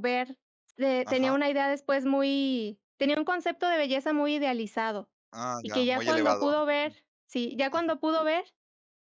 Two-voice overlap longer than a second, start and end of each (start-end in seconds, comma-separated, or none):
5.6-6.9